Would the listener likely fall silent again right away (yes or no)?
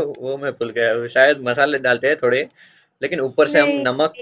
yes